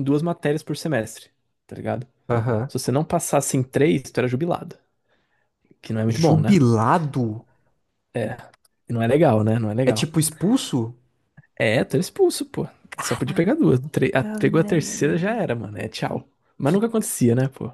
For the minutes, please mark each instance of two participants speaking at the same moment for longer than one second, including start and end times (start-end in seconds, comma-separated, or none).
14.2-15.5